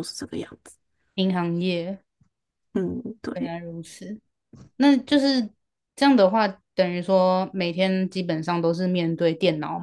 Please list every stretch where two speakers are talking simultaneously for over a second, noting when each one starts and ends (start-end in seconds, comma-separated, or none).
none